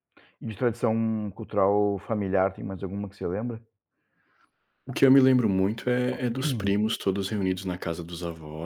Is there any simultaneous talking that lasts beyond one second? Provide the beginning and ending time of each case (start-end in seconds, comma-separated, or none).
none